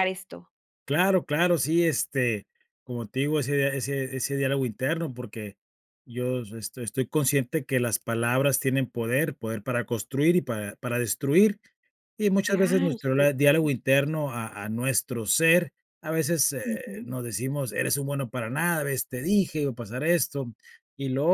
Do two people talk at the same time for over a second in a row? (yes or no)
yes